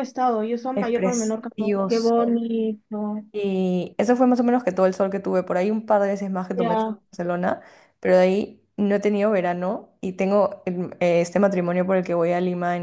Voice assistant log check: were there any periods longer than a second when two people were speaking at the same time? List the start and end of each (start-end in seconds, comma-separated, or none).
0.7-2.1